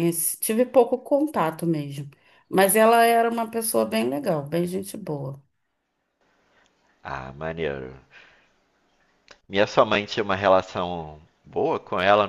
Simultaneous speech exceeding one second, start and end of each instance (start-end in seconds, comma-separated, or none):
none